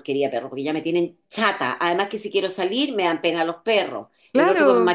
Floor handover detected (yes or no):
no